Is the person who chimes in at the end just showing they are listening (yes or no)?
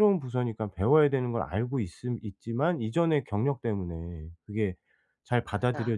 yes